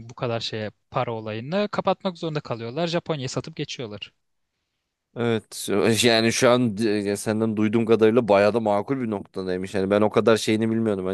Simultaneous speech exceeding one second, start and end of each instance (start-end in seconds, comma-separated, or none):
none